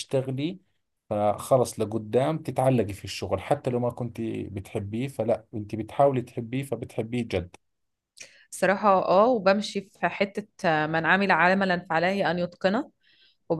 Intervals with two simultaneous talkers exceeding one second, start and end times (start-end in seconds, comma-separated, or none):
none